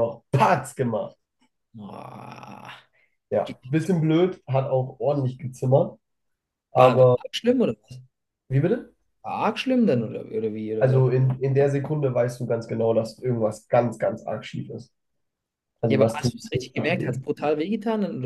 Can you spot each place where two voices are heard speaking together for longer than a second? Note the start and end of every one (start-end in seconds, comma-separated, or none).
15.9-17.2